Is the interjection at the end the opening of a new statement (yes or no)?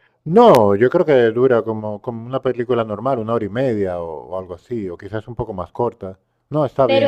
yes